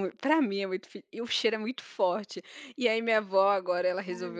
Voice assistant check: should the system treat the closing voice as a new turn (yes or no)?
no